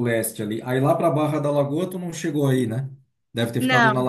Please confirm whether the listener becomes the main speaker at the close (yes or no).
no